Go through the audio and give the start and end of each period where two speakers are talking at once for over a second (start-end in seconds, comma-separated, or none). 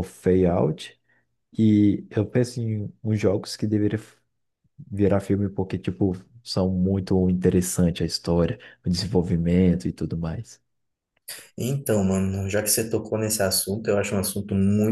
none